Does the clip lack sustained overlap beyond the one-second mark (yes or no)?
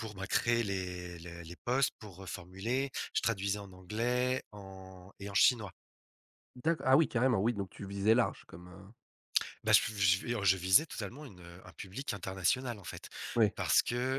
yes